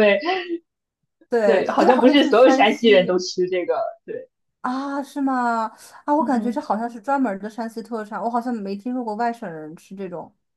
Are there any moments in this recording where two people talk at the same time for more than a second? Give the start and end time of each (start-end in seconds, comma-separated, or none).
1.4-3.2